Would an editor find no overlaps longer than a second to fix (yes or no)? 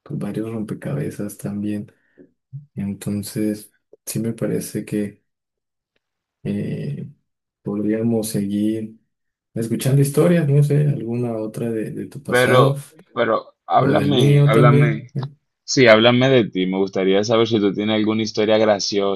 no